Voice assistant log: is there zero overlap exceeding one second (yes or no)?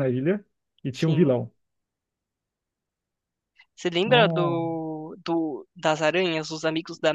yes